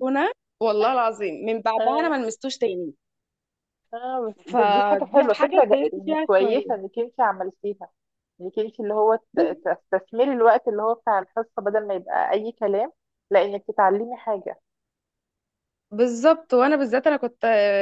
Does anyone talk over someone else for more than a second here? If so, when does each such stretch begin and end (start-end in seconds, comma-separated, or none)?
4.5-6.8